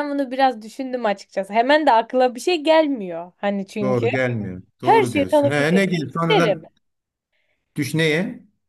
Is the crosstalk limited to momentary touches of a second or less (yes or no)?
no